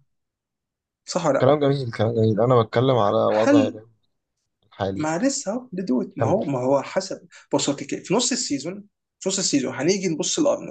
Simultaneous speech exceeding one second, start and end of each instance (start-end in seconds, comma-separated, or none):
none